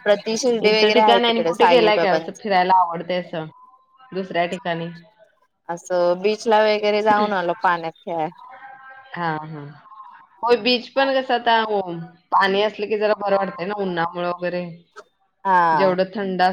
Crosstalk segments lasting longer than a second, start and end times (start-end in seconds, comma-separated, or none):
0.7-2.4